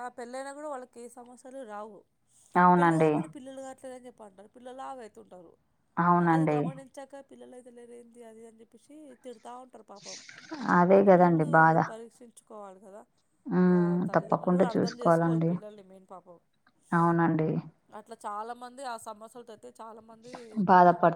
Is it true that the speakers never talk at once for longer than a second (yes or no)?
no